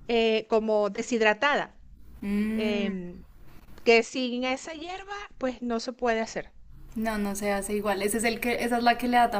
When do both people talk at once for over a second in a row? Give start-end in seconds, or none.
none